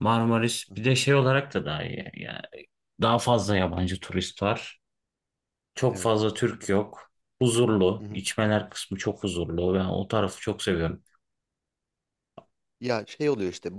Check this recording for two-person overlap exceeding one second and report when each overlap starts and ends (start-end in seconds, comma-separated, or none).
none